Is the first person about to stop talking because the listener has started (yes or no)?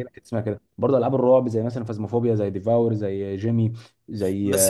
yes